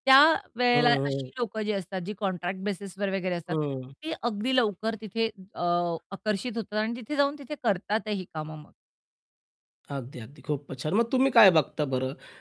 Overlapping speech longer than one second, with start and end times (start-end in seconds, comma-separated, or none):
none